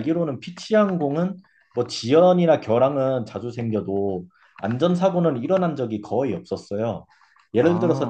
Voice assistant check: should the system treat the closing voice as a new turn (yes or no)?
no